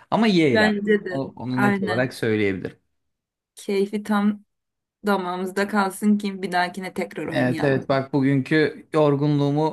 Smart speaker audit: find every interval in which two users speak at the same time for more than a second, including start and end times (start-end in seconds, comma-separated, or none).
0.5-2.1